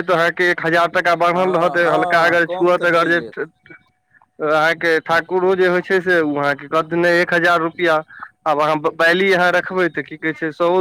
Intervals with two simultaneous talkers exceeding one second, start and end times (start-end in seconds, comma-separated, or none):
1.3-3.2